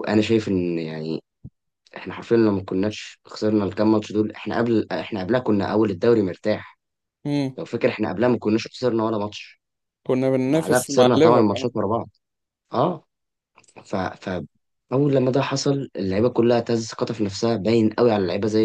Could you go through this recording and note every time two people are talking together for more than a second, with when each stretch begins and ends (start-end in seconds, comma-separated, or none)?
10.5-11.7